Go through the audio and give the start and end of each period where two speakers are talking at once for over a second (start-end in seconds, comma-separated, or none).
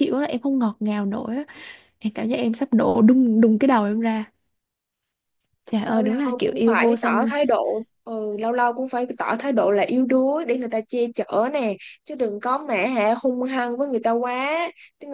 5.8-7.3